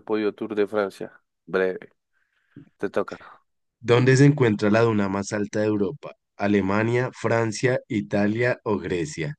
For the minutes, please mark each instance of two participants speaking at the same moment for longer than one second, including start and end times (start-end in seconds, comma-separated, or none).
none